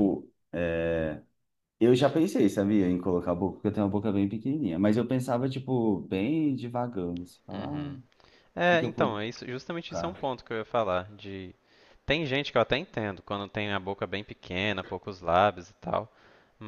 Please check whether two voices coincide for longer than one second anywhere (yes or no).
no